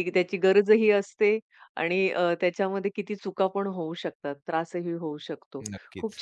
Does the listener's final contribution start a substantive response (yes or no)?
no